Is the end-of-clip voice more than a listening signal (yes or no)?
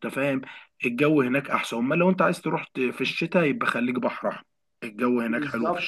yes